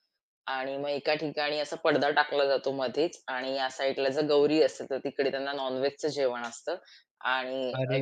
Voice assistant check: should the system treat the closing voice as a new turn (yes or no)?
yes